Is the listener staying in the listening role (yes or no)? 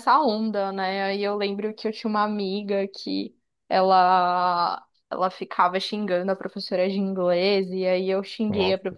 yes